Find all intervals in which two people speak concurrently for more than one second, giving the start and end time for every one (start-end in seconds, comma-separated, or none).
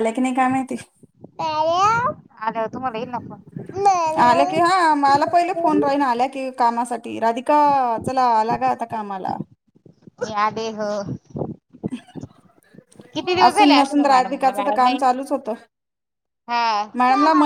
13.5-15.0